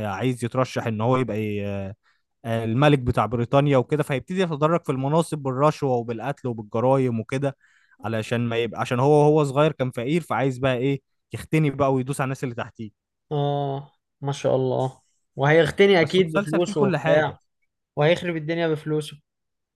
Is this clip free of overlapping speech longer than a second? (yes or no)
no